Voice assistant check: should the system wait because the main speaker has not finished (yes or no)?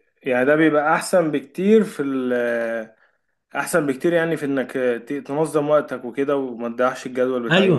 no